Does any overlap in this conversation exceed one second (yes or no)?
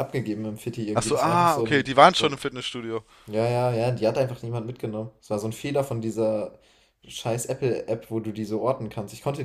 yes